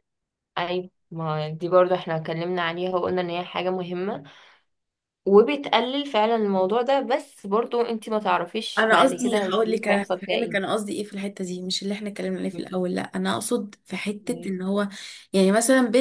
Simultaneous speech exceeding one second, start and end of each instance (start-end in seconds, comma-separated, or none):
8.8-10.7